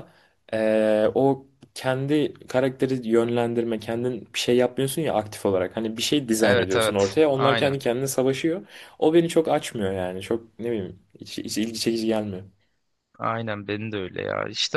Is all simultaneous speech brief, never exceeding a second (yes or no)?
no